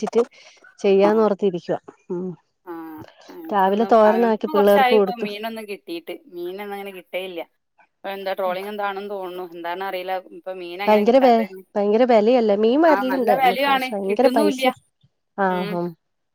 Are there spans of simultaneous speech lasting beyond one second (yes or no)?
yes